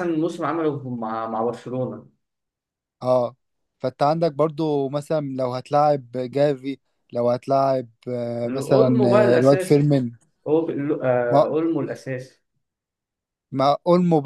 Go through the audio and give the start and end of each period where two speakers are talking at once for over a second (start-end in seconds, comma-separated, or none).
8.4-9.9